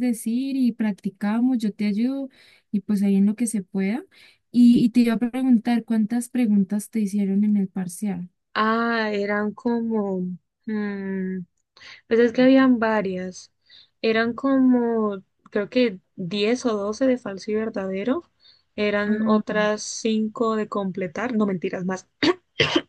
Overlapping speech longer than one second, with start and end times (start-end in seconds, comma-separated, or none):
none